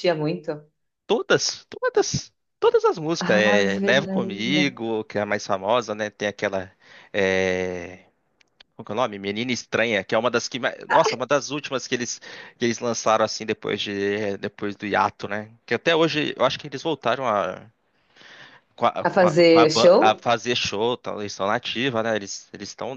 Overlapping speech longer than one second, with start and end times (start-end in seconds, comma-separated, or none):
3.3-4.7, 19.1-20.2